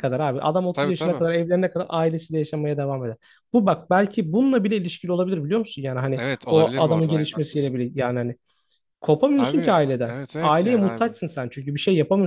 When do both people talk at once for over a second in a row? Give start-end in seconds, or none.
6.2-7.8, 9.3-11.2